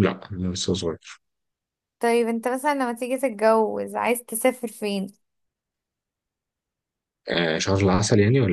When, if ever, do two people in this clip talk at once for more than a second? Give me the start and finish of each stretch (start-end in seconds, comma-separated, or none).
none